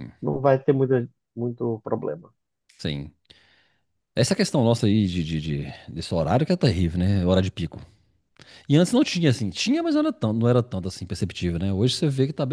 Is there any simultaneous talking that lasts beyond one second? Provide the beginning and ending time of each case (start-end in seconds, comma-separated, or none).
none